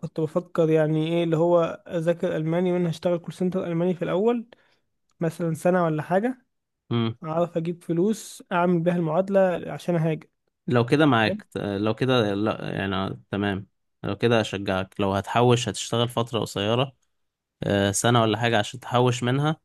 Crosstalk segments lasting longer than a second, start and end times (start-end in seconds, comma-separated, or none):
none